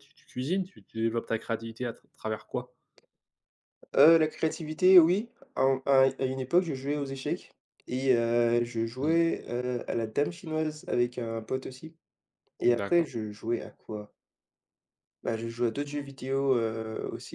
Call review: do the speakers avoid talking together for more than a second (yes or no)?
yes